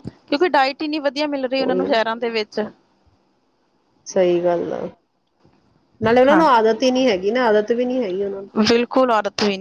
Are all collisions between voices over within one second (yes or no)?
yes